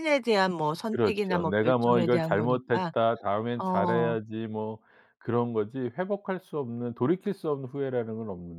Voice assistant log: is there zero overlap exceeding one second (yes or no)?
no